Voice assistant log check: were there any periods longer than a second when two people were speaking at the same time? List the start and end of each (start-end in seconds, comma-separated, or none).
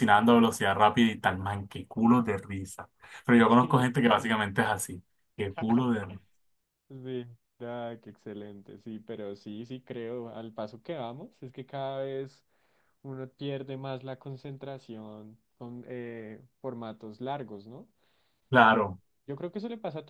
none